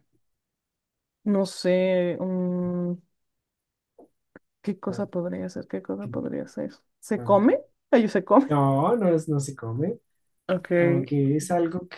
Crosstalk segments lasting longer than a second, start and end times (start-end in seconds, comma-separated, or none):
none